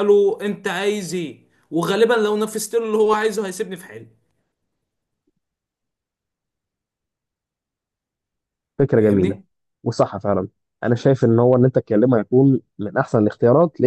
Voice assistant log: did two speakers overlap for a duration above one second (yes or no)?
no